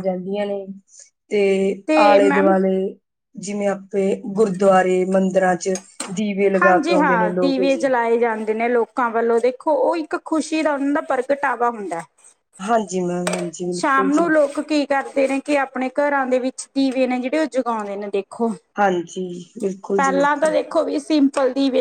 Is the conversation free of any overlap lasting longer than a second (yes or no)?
no